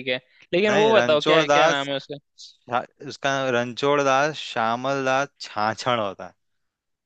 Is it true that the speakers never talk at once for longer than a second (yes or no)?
no